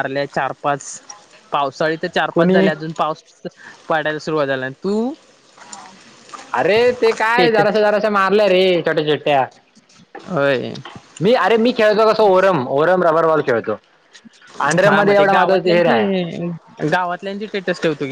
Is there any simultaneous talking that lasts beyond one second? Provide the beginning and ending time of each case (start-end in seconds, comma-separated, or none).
14.8-16.1